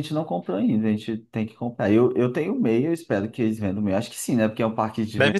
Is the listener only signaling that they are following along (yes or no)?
no